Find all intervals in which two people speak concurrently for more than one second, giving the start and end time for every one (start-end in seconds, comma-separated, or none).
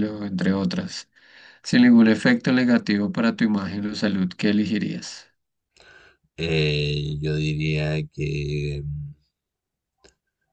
none